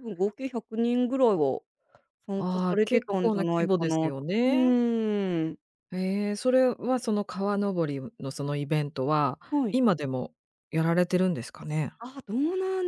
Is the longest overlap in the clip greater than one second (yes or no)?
yes